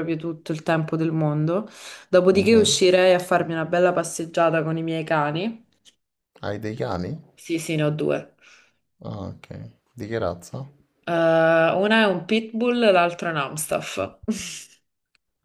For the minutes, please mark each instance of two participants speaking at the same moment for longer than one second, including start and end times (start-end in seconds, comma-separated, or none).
none